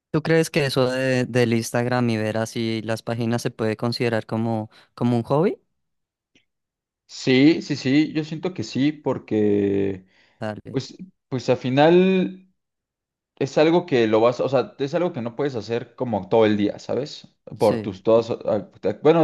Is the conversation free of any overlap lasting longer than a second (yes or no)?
yes